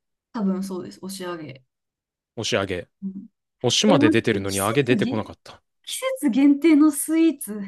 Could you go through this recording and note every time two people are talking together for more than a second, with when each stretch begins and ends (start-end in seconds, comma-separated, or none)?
3.9-5.3